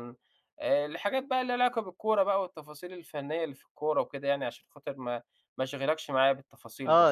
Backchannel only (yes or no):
no